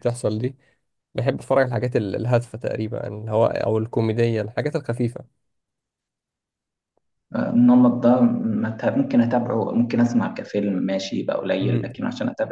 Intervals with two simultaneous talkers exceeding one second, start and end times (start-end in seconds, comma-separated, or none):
none